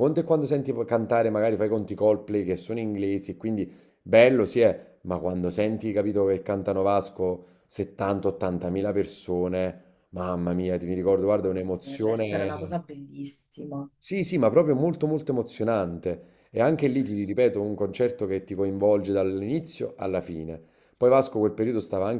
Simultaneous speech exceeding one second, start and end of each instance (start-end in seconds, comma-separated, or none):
11.4-12.8